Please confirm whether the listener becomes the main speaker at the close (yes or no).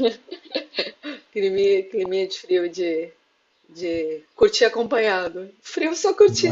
no